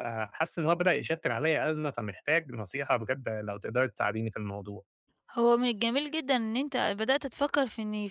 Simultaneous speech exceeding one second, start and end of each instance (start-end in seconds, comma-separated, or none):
none